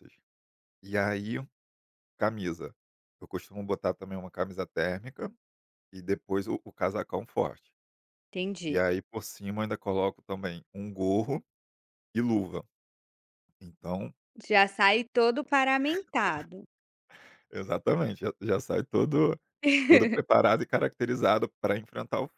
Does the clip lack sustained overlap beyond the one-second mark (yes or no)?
yes